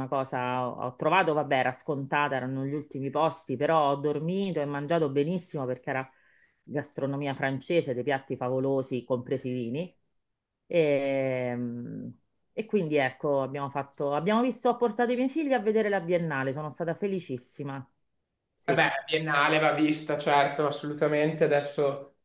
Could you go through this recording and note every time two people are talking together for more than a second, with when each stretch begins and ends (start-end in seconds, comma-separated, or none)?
none